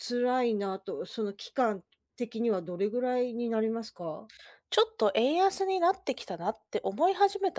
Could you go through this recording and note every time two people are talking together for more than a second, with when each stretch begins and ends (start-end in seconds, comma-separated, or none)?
none